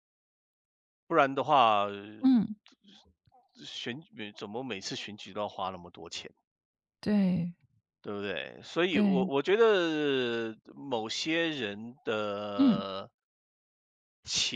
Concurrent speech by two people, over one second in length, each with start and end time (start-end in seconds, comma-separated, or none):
none